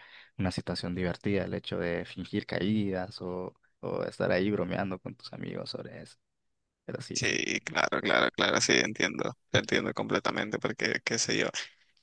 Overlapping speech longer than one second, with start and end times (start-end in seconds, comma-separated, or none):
none